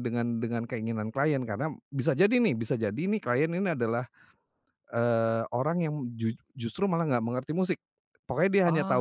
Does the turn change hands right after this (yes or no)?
no